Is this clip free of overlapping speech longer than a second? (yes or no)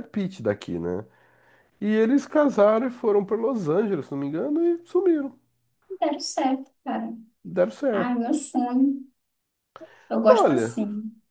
yes